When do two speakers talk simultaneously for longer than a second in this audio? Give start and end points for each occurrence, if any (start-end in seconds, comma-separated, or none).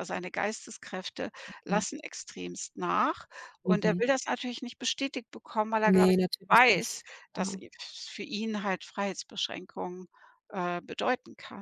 5.8-7.6